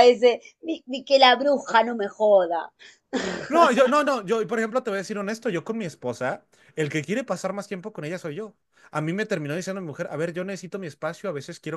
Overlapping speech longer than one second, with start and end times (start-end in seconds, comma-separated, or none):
none